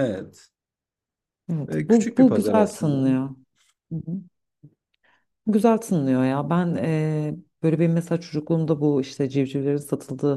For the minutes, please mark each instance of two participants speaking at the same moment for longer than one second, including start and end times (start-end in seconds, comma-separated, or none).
1.7-3.1